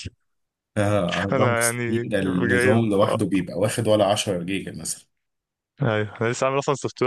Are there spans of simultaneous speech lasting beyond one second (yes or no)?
yes